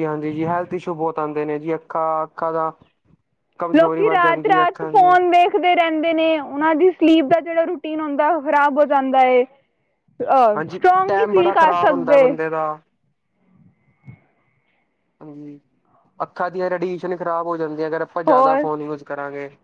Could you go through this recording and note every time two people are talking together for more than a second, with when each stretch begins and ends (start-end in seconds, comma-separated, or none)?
3.8-5.0, 10.6-12.3